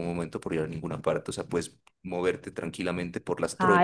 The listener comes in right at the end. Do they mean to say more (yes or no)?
yes